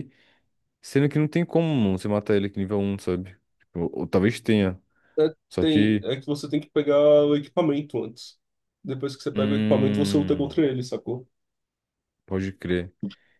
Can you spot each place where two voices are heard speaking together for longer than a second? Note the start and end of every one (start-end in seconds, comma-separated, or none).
9.3-10.6